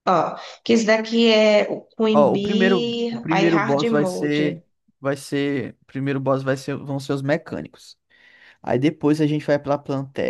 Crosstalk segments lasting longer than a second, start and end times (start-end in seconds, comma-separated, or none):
2.1-4.6